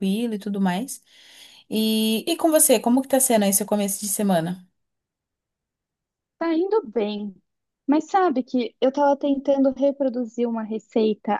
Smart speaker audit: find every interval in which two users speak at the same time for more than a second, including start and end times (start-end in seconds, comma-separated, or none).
none